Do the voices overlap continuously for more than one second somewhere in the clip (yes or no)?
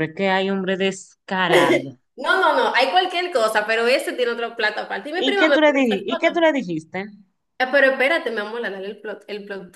yes